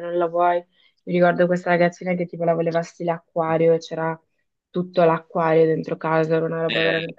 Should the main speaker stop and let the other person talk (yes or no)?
yes